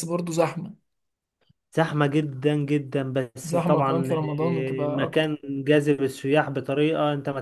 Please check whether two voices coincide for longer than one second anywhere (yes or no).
yes